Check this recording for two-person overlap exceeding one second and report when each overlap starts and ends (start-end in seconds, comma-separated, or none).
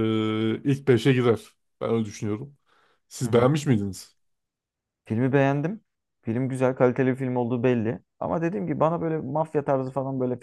none